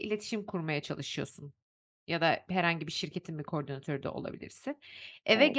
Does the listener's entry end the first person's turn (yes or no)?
no